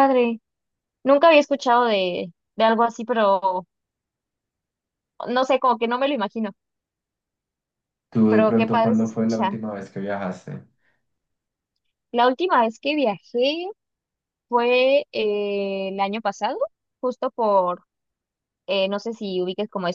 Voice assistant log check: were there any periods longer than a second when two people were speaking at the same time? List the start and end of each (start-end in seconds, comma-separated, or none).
8.3-9.6